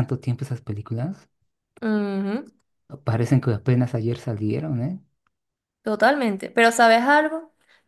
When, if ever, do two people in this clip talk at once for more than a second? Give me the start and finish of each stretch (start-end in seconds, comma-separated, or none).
none